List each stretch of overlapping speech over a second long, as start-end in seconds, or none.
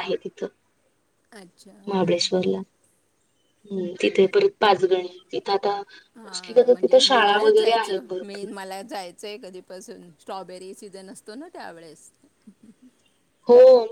6.2-8.5